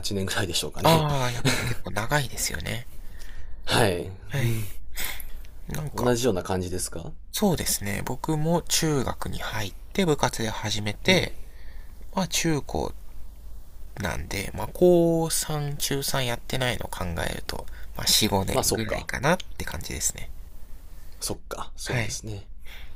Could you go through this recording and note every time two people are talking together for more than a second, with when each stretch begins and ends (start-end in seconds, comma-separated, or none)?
none